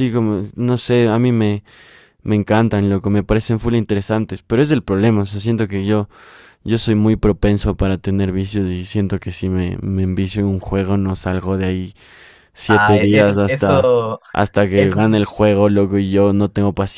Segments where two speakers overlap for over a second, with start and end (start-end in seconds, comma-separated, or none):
12.7-13.9